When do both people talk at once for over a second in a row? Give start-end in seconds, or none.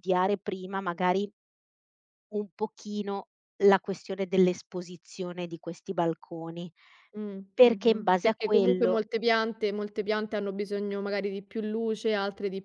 7.5-9.0